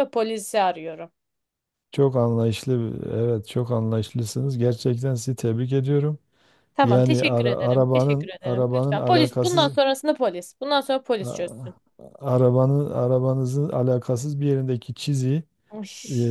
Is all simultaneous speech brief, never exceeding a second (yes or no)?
no